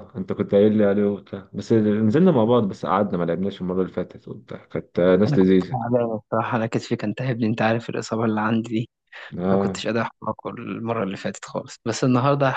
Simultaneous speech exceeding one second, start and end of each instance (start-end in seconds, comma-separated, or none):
none